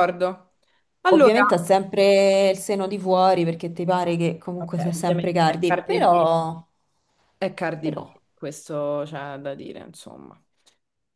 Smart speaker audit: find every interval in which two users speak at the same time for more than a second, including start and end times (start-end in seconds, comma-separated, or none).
4.6-6.3